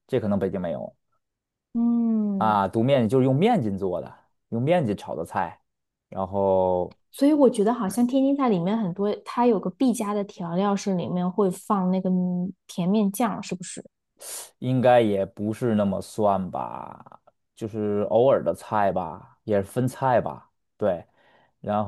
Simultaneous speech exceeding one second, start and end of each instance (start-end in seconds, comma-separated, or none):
none